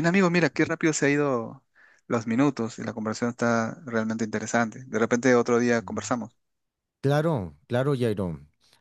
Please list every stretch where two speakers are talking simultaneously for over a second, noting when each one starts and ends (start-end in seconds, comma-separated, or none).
none